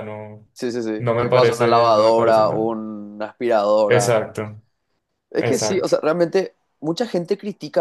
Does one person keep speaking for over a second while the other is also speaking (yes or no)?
yes